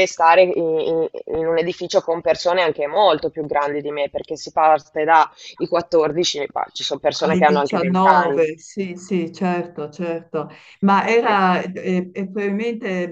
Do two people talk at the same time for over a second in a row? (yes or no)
yes